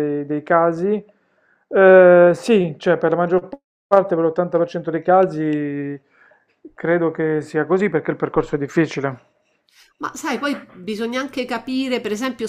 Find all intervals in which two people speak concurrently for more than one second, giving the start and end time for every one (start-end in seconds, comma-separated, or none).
none